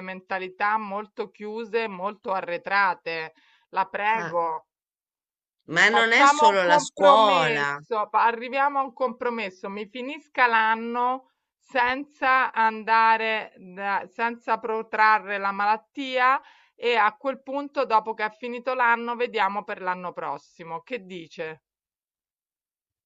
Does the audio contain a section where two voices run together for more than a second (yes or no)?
yes